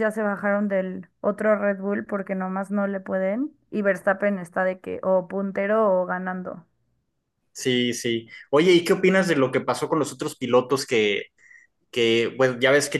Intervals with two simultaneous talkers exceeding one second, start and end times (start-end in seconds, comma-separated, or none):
none